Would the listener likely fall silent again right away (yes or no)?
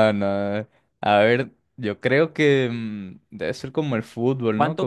no